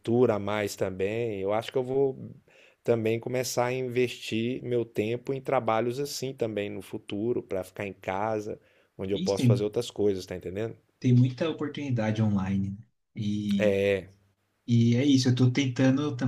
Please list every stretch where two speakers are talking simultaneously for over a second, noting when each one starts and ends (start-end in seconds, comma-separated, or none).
none